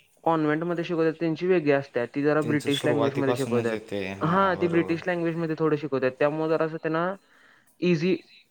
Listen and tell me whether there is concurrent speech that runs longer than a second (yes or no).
yes